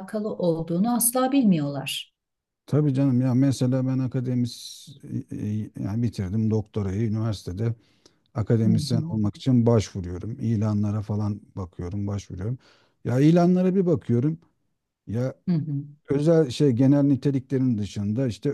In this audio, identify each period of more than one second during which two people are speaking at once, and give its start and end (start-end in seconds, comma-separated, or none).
none